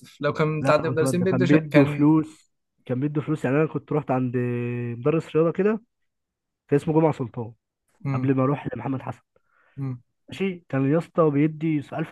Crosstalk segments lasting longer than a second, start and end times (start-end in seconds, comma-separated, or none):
0.6-2.1